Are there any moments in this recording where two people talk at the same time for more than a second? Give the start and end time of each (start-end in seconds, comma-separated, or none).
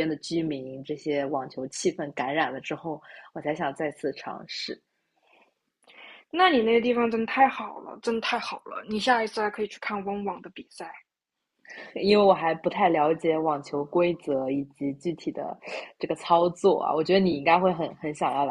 none